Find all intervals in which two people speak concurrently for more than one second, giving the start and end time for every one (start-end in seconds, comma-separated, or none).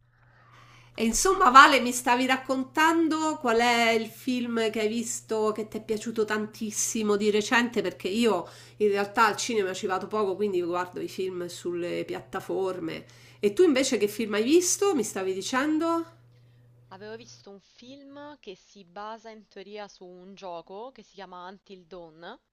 none